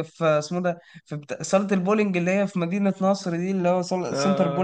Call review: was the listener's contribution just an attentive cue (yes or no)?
yes